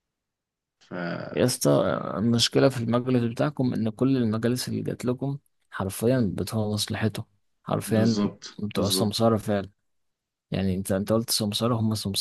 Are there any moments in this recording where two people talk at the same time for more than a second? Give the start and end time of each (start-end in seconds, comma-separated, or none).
7.8-9.3